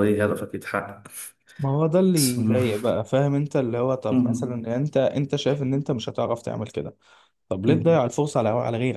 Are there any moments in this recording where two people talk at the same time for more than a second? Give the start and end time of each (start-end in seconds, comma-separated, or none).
none